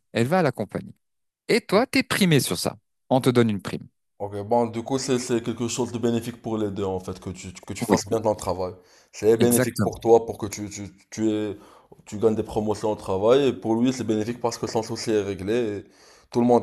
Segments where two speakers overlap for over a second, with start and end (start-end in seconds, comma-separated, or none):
none